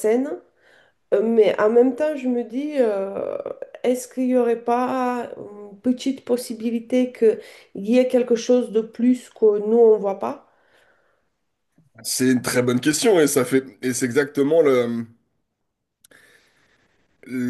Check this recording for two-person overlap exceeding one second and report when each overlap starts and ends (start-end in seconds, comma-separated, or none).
none